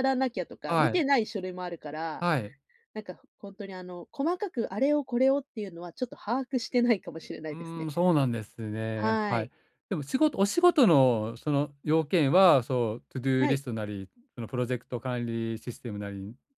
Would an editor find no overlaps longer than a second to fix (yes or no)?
yes